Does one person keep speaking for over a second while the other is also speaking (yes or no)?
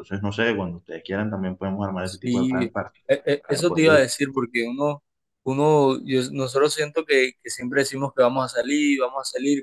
no